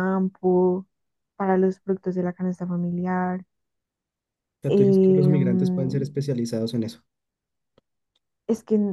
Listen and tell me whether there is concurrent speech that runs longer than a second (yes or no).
yes